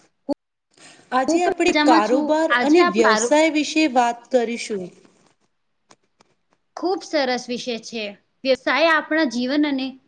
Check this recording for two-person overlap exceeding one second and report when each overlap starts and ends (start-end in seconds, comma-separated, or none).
1.3-3.3